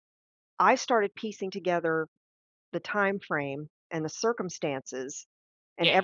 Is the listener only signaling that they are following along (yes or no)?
yes